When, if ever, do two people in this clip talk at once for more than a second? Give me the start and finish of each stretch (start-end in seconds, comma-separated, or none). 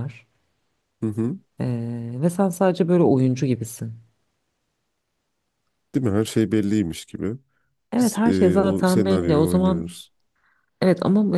8.0-9.9